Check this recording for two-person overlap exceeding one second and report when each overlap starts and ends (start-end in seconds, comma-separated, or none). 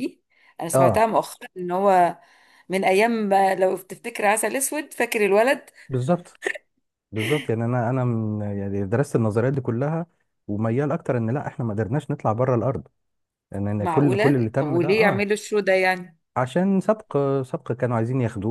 13.8-15.3